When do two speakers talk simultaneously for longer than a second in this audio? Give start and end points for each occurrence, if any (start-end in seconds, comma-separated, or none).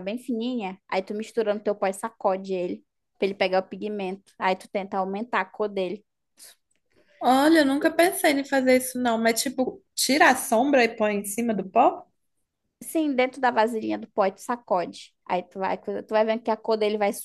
none